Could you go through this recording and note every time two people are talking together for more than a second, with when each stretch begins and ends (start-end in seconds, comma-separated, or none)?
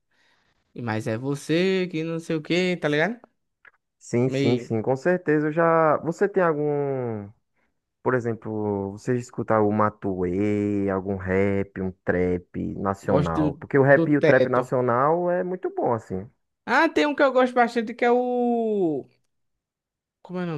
13.0-14.7